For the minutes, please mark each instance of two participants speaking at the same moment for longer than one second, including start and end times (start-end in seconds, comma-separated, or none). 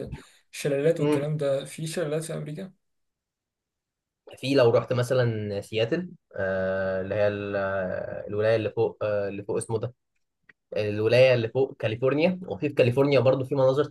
none